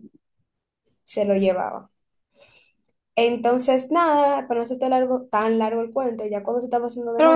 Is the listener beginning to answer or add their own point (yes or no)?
yes